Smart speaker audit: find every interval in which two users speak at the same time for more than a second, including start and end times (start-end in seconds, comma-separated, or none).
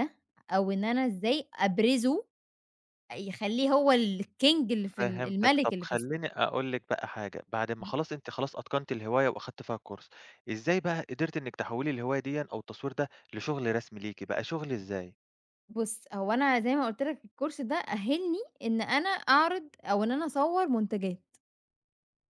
4.8-6.2